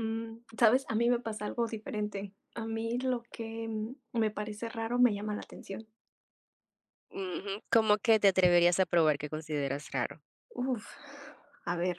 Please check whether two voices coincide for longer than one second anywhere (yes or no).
no